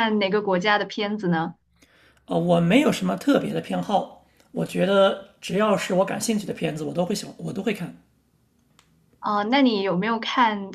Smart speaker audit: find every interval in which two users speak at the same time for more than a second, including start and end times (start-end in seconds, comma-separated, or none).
none